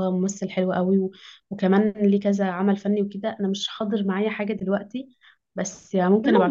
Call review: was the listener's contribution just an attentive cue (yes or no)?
no